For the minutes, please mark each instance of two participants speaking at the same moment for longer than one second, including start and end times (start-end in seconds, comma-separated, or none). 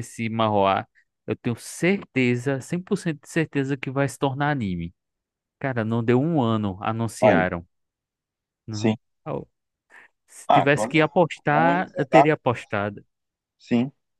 10.5-12.6